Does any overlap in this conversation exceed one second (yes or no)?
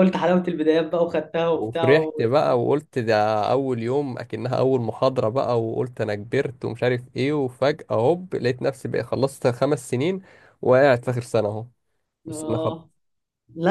no